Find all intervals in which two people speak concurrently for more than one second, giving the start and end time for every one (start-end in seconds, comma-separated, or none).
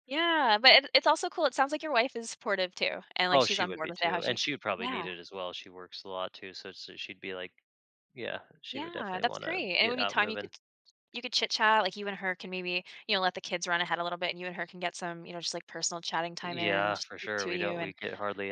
3.3-5.1, 8.7-10.5, 16.4-17.9